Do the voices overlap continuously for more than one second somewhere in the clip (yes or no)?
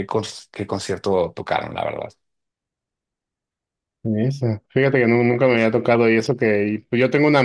no